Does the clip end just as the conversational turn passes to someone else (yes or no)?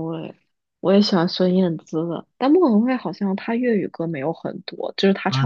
yes